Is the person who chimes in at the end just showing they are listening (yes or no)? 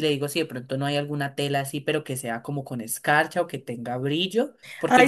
no